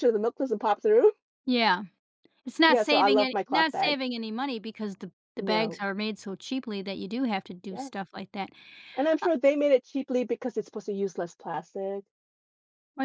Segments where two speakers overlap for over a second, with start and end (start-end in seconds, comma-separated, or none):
2.7-4.0